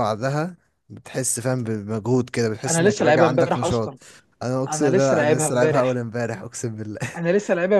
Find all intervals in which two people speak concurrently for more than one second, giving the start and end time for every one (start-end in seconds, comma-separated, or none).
2.7-3.9, 4.7-6.0